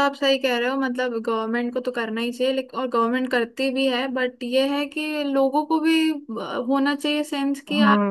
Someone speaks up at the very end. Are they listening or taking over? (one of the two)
taking over